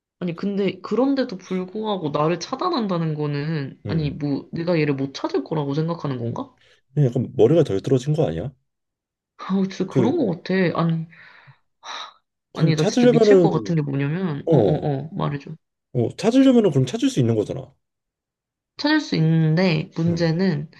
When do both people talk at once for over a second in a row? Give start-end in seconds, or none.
12.5-13.7